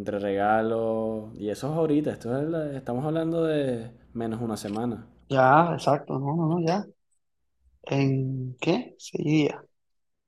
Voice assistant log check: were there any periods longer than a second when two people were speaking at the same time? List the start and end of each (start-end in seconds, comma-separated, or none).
none